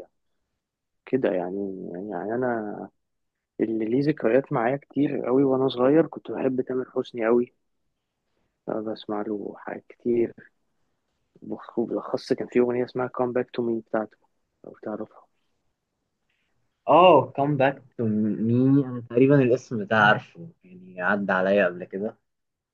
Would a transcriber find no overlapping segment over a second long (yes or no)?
yes